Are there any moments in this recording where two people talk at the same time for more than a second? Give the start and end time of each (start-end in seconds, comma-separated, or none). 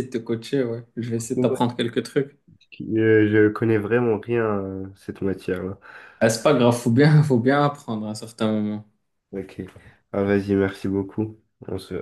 none